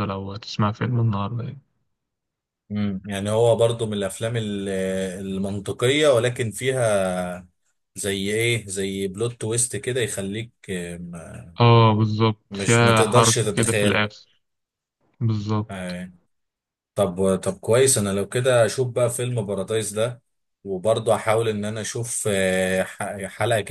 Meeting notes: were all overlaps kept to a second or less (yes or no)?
no